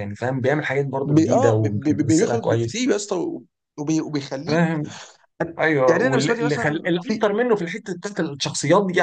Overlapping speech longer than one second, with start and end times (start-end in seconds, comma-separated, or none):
1.0-2.8, 5.9-7.3